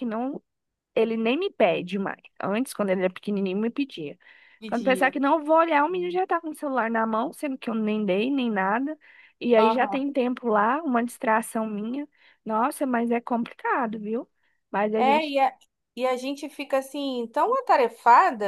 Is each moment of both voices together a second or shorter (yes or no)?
yes